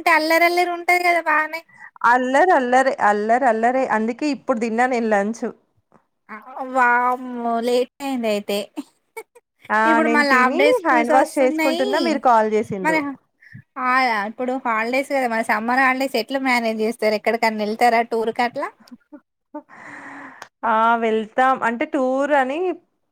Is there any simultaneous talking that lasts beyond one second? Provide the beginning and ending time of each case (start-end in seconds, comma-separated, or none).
9.9-11.9